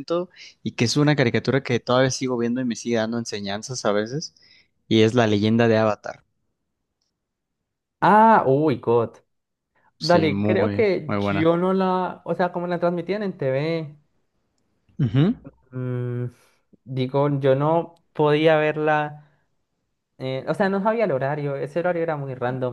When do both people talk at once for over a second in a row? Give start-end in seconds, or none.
10.0-11.5